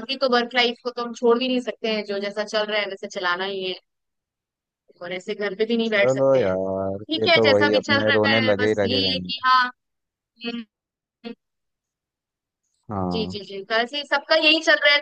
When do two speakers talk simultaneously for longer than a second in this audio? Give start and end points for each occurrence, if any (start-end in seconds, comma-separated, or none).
5.9-9.3